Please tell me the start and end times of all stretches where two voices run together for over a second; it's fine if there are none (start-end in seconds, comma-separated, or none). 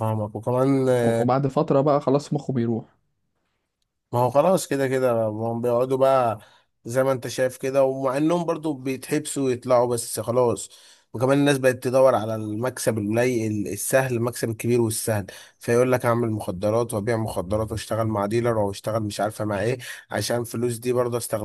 none